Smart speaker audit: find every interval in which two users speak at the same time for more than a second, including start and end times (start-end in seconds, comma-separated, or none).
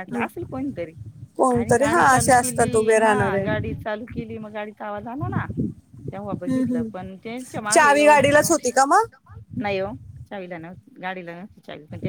1.5-3.5, 6.3-8.2